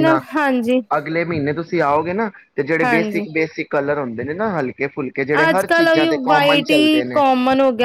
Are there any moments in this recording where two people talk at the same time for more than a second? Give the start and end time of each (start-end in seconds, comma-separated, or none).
5.5-7.2